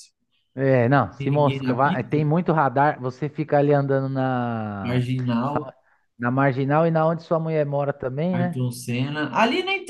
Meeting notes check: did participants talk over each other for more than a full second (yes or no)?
yes